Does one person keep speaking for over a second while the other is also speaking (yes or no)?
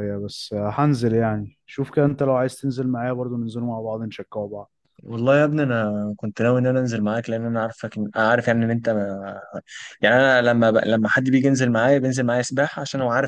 no